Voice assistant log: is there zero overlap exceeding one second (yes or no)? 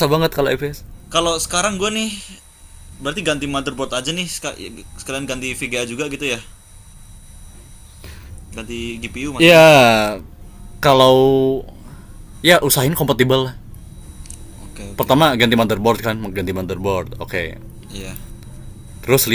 yes